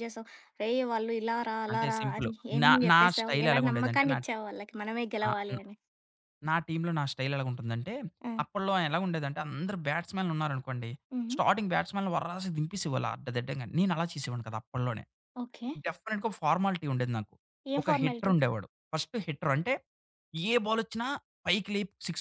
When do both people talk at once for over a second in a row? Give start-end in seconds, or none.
1.7-4.2